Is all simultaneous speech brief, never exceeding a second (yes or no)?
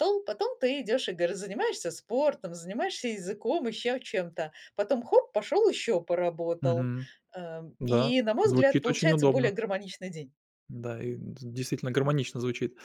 no